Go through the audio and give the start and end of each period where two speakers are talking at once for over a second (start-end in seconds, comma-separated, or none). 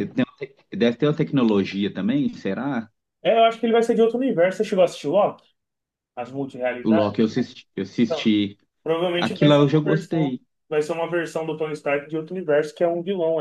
9.2-10.4